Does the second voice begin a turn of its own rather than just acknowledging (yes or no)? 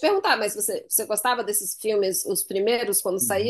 yes